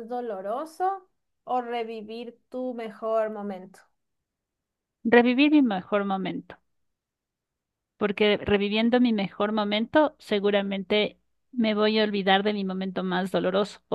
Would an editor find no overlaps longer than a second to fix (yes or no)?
yes